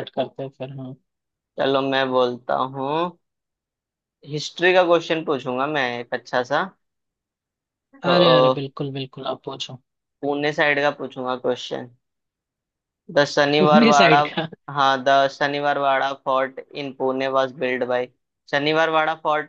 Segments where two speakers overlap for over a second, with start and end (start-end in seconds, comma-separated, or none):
none